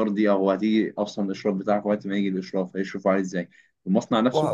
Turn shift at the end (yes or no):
no